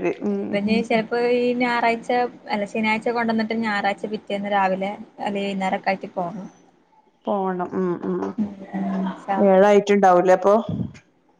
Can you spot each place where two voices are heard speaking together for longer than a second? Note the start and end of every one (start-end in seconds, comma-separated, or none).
none